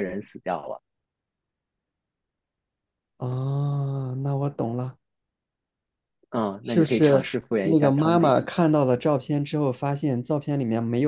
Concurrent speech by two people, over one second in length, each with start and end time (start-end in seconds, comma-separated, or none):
6.6-8.4